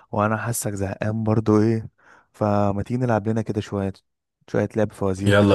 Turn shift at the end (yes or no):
yes